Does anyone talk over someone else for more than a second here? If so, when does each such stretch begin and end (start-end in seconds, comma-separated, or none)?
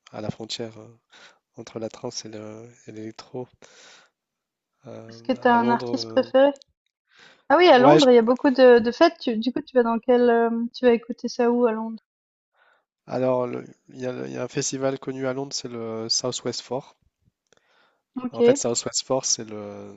5.1-6.3